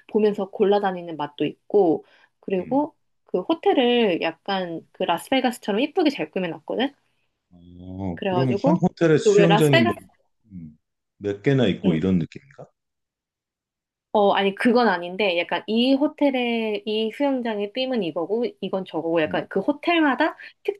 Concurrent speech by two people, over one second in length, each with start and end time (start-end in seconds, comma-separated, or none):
8.1-10.0